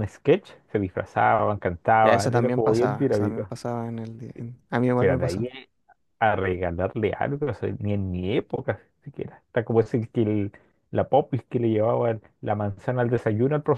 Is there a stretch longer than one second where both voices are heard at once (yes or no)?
yes